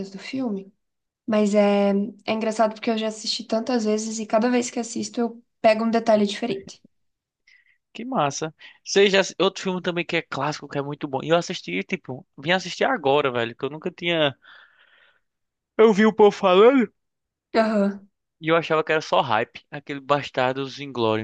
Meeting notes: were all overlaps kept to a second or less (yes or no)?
yes